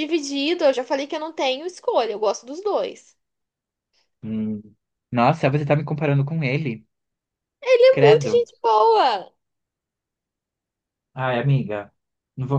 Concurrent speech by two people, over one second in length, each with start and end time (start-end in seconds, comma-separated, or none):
none